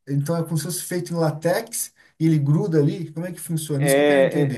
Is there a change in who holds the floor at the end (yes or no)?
yes